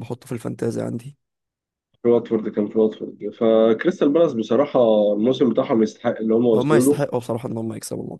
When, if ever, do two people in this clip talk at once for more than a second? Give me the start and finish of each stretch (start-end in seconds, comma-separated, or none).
none